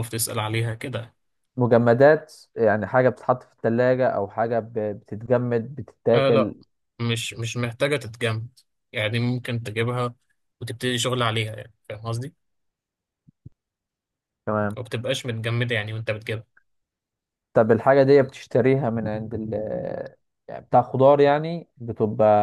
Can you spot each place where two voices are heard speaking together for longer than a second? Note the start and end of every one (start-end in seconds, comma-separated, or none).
none